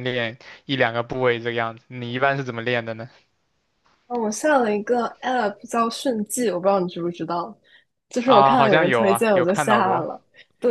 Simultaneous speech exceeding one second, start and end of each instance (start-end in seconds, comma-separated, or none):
8.2-10.1